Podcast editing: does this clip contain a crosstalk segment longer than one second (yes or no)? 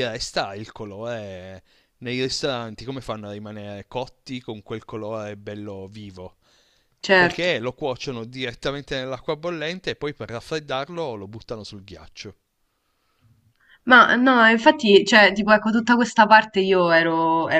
no